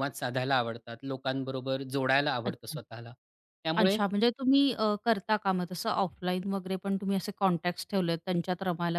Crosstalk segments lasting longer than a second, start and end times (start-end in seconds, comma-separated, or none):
none